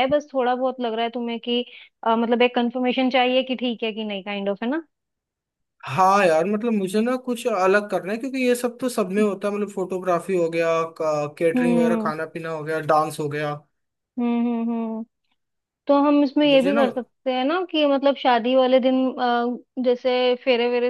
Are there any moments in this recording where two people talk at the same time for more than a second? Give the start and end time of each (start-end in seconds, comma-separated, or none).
none